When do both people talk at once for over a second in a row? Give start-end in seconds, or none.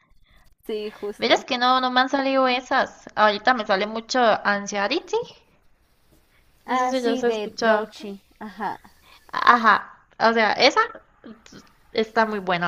6.7-7.9